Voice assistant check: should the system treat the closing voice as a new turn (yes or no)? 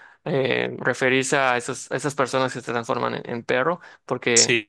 yes